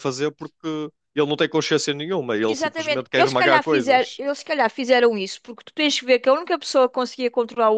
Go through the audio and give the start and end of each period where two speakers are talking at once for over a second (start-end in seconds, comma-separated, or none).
2.4-4.2